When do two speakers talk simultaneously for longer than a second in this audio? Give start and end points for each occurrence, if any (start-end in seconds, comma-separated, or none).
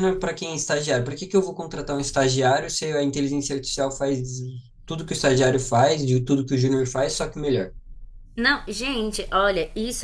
none